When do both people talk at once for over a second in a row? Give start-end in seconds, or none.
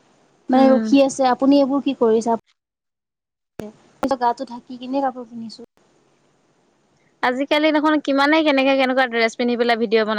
none